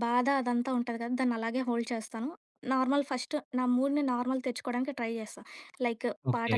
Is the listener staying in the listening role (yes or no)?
yes